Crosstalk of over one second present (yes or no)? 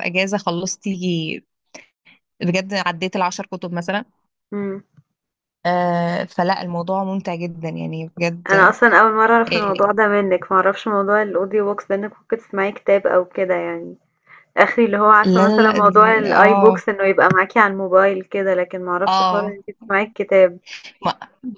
yes